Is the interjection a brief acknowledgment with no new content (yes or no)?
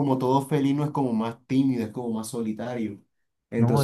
yes